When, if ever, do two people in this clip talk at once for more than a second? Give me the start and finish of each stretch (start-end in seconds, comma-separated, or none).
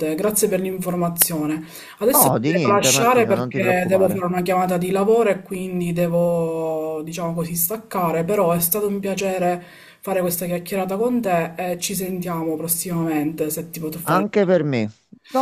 2.1-4.2